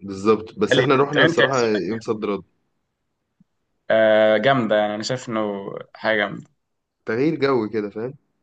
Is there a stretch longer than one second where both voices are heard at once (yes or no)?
yes